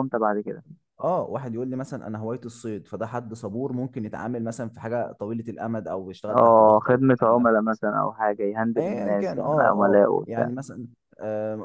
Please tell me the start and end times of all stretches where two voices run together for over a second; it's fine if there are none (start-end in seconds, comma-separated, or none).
6.3-7.5, 8.8-10.5